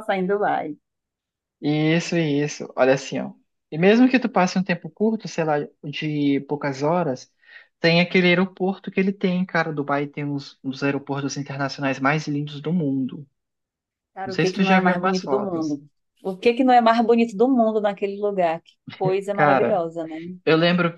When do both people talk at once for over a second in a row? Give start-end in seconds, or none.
14.2-15.8